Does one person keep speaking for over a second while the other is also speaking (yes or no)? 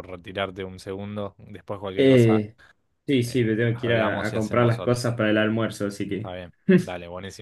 yes